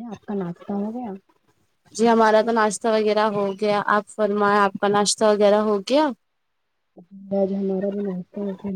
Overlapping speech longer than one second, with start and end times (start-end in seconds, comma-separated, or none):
none